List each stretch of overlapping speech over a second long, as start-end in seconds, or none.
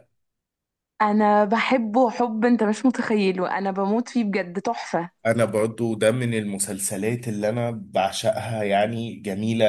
none